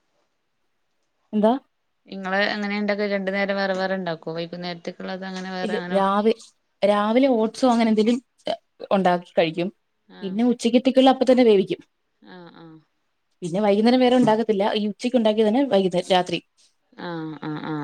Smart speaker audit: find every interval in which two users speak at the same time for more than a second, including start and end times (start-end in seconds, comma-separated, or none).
none